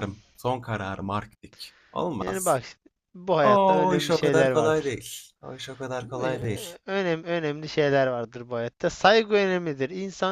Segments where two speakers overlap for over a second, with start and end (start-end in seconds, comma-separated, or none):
3.4-4.9